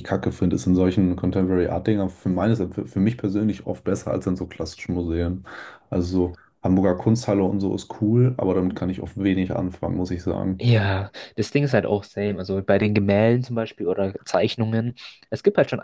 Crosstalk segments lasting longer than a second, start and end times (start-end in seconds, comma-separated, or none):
none